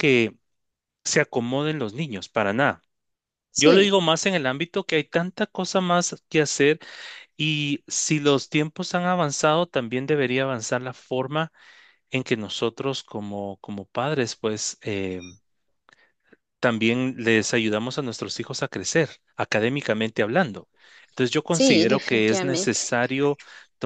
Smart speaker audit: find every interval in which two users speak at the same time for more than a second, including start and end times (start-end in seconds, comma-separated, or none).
21.5-22.9